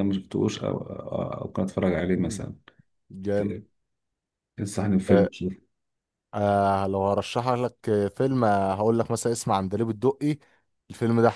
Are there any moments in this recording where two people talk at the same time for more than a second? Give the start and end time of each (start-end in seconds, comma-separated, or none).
none